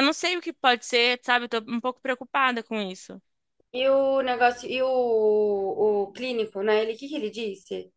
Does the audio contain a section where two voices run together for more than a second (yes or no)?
no